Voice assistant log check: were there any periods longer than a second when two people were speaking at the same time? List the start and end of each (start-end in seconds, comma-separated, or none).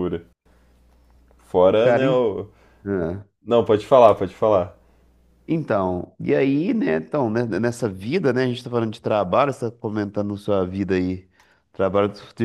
none